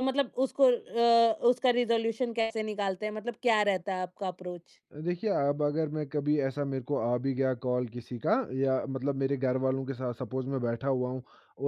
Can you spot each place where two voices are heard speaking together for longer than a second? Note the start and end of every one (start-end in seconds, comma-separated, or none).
none